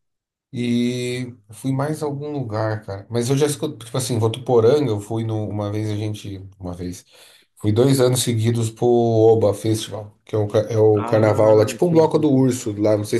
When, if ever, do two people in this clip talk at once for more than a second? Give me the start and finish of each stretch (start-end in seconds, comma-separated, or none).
10.9-12.4